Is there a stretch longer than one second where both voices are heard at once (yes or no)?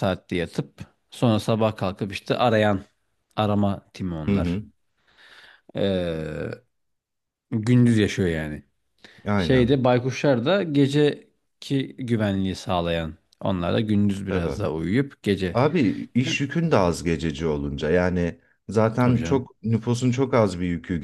no